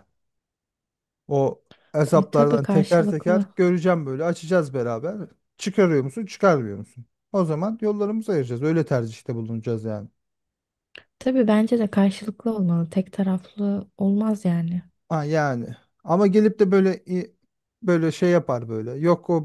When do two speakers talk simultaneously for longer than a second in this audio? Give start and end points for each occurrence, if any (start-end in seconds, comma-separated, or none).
2.1-3.4